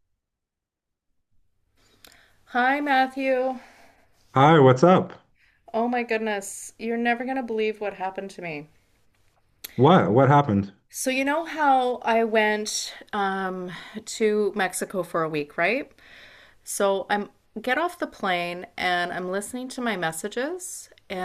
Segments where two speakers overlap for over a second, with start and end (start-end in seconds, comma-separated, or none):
none